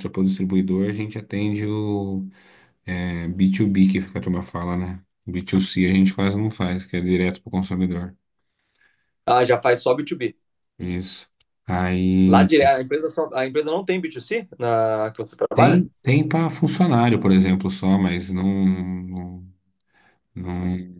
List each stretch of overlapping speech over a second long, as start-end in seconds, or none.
none